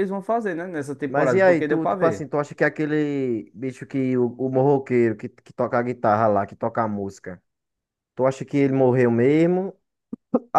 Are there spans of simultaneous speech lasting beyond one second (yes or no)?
yes